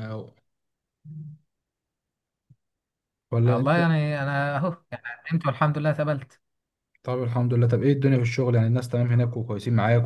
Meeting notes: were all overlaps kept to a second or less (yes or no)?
yes